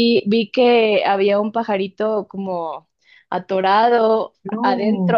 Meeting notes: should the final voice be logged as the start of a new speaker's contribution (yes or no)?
no